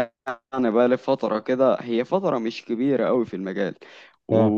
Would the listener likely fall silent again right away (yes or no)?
yes